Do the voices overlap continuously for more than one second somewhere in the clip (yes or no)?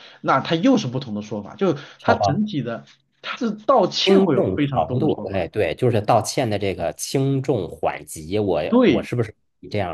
yes